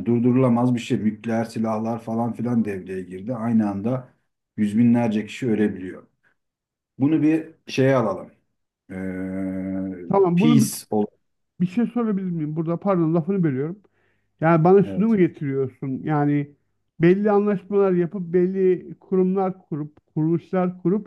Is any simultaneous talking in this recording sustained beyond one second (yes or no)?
no